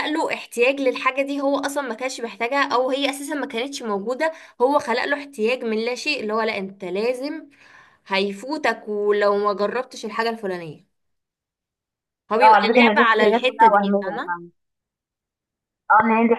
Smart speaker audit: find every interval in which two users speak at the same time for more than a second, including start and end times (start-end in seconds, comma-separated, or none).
12.4-14.3